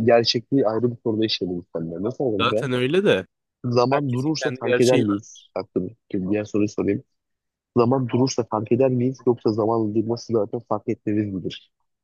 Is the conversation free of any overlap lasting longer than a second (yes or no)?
no